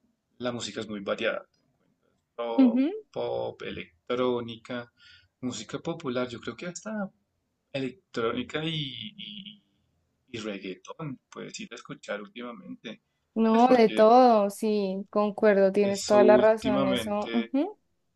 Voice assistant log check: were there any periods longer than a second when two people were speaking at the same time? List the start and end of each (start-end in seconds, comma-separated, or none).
15.8-17.5